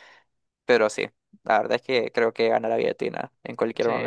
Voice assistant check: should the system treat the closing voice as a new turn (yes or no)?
yes